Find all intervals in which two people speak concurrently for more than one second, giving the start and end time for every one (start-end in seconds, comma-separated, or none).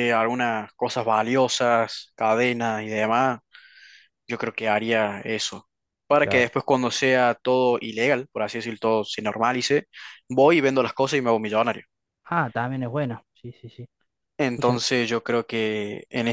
none